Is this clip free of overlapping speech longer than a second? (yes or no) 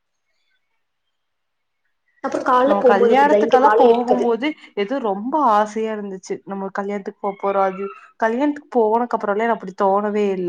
no